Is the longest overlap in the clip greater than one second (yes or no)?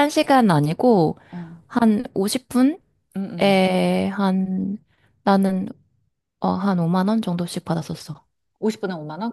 no